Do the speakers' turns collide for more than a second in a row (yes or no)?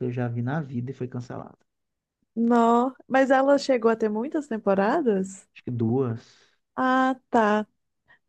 no